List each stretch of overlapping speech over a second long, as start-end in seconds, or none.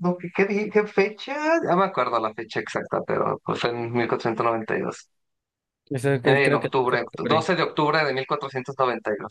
6.2-7.5